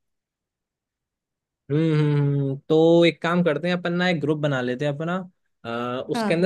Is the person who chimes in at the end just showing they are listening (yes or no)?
yes